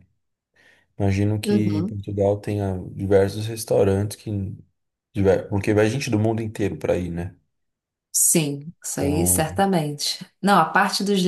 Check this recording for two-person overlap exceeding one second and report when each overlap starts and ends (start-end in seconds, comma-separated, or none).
none